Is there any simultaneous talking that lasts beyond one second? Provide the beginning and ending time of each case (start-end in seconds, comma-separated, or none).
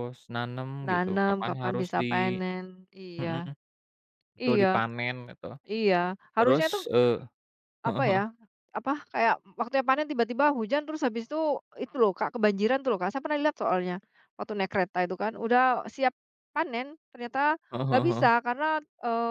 0.9-2.4